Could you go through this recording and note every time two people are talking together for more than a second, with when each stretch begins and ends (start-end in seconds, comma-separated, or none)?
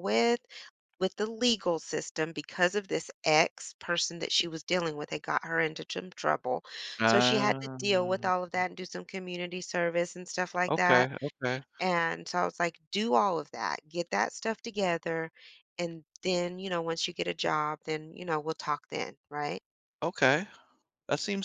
7.0-8.2